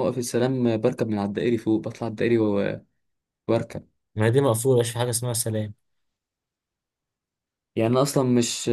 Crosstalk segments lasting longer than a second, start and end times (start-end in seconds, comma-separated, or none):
none